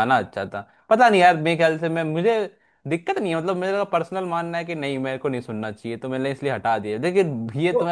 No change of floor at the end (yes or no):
yes